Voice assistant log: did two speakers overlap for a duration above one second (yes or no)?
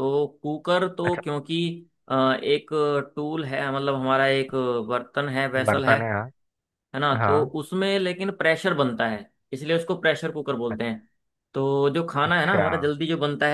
no